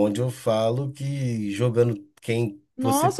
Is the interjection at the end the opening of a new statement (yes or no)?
yes